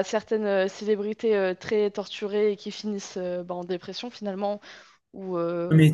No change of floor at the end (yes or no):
no